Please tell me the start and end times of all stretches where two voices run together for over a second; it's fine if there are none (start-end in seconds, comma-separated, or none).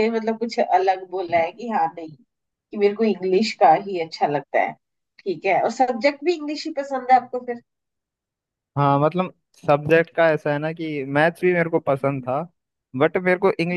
none